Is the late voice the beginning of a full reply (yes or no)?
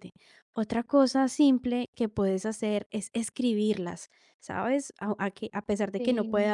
no